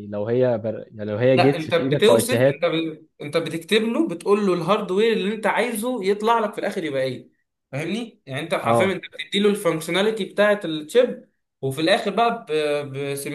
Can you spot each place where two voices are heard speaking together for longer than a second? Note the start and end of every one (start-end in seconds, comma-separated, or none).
1.4-2.6